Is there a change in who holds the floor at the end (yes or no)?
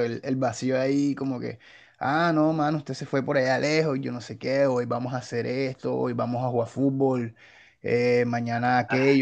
no